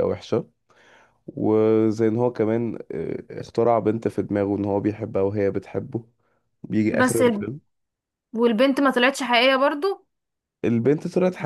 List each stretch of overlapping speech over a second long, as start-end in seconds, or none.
none